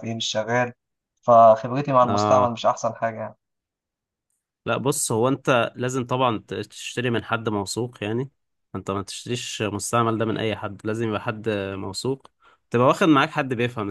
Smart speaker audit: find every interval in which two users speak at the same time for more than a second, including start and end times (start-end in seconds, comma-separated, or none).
none